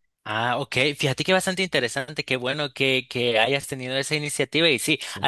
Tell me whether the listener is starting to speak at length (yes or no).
no